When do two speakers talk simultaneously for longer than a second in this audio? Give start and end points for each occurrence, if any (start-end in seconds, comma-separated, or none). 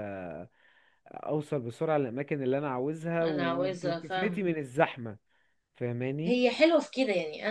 3.2-4.5